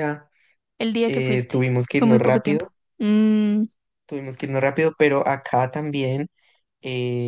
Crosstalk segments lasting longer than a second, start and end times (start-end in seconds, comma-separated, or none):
1.1-2.7